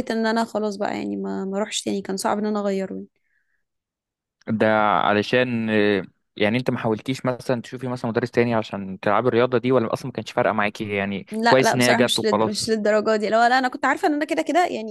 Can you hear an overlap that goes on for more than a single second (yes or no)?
yes